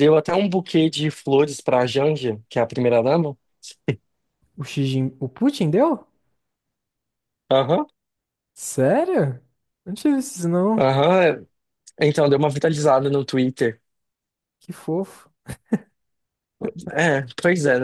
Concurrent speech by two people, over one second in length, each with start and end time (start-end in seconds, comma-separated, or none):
none